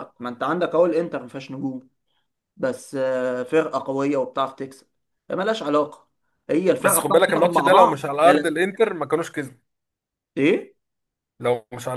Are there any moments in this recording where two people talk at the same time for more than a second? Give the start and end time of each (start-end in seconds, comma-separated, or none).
6.8-8.6